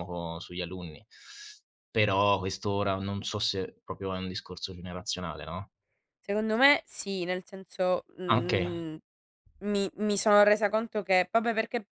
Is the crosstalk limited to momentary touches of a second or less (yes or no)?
yes